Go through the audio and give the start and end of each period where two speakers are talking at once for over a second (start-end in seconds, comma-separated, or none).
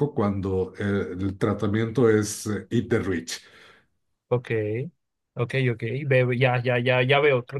none